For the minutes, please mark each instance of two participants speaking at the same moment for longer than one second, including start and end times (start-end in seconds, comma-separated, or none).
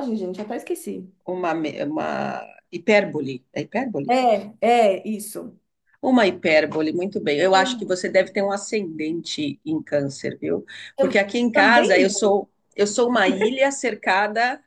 10.9-12.4